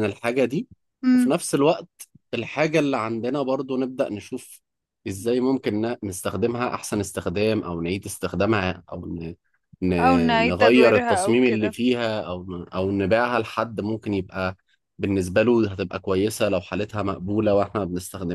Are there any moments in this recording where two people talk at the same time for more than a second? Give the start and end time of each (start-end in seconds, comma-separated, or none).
10.4-11.7